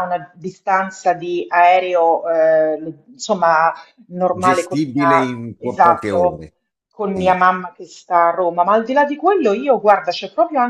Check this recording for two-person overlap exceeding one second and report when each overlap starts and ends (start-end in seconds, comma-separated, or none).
4.4-6.4